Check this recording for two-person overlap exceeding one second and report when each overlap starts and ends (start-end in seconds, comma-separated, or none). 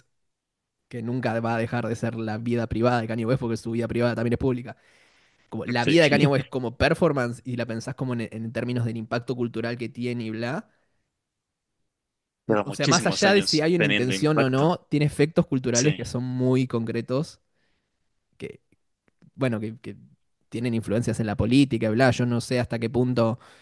12.6-14.7